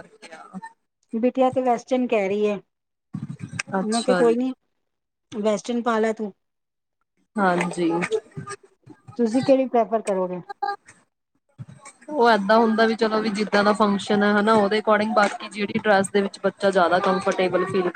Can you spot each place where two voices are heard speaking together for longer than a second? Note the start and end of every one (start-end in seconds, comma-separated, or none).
none